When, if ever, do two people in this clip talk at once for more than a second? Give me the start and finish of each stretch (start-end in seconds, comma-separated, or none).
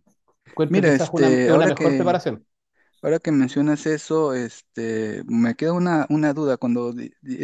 0.7-2.2